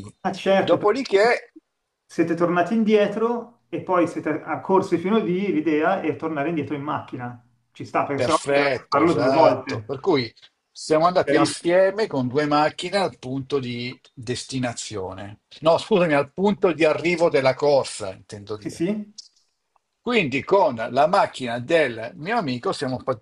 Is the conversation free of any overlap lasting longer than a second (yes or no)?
no